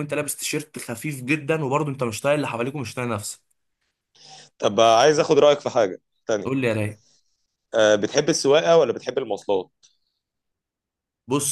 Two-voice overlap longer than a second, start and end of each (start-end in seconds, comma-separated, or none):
none